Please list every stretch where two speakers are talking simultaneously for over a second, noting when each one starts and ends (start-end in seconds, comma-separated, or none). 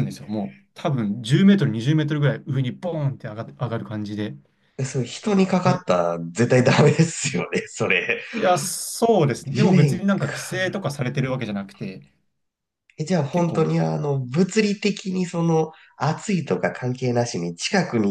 9.4-10.8